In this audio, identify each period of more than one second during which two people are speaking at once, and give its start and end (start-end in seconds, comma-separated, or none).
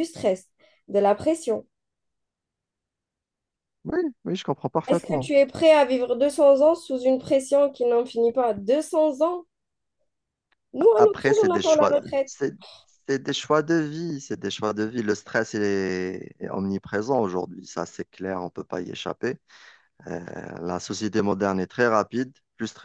10.8-12.3